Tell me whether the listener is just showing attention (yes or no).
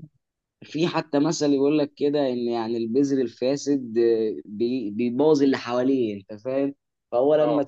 yes